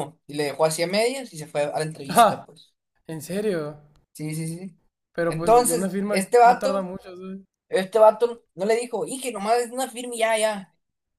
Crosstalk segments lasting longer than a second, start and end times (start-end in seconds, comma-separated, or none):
5.3-6.9